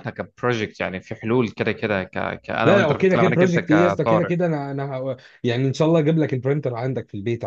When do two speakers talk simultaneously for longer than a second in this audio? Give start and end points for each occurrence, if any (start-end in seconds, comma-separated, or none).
2.6-4.3